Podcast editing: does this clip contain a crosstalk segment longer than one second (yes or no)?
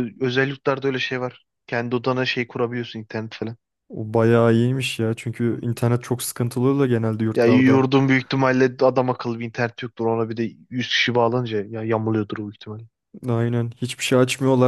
no